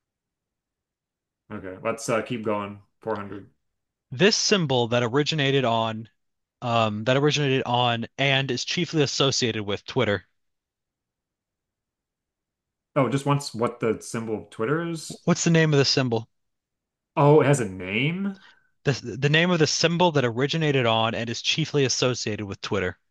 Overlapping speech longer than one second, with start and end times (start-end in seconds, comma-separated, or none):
none